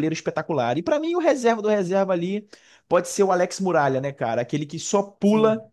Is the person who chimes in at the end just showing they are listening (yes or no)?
yes